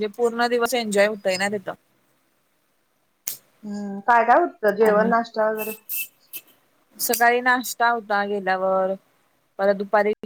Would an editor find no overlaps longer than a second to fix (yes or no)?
yes